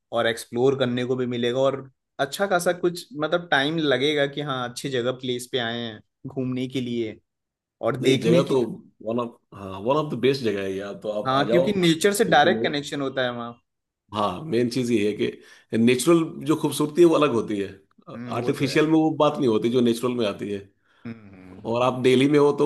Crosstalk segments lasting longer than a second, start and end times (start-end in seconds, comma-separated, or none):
11.3-12.9